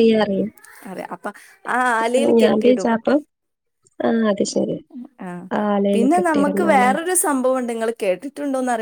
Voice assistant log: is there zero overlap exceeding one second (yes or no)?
yes